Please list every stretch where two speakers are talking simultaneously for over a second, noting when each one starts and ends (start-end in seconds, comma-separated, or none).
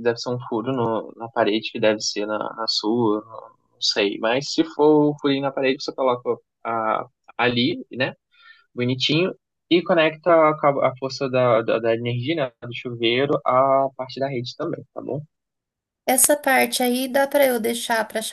none